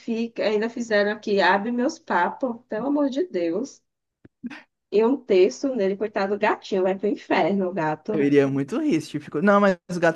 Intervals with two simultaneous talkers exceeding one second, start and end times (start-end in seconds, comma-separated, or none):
none